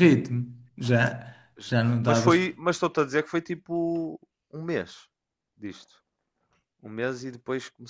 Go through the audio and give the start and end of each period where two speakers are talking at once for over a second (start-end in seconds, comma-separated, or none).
none